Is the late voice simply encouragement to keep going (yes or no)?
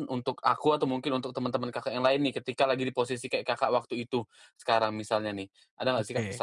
no